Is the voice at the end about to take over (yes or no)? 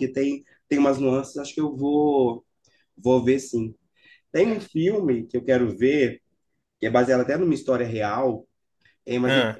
no